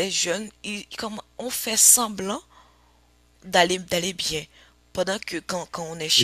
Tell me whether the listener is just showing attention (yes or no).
yes